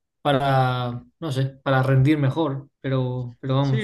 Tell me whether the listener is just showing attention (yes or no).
no